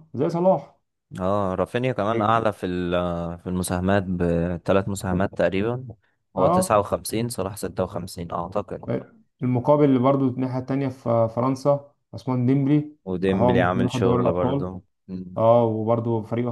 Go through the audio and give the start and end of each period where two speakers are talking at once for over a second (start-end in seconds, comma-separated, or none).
13.3-14.7